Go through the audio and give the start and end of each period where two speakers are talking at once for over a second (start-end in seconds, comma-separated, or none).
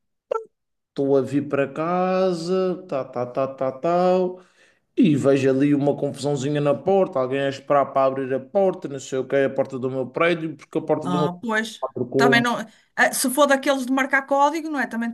11.0-12.4